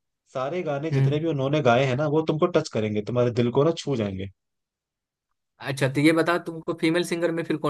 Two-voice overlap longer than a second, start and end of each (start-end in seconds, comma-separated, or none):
none